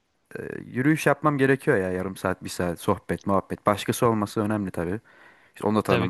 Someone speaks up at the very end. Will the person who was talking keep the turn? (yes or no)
yes